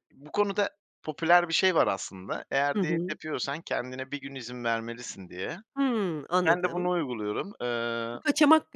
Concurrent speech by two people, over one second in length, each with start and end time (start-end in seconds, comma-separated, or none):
none